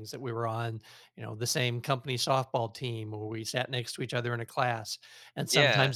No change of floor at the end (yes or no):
yes